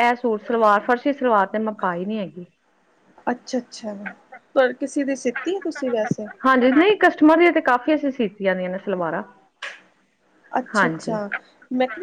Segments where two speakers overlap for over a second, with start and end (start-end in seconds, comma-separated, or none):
none